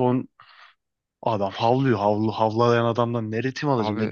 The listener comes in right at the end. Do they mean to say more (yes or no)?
no